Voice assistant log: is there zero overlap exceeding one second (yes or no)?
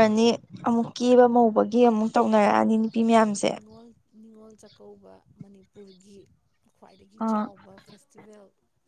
yes